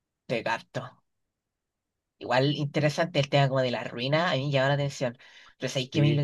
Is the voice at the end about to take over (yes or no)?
no